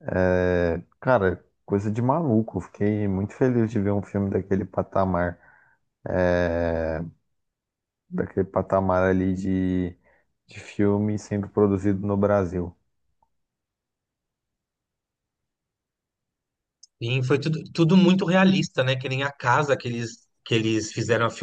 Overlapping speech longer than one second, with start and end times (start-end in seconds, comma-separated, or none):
none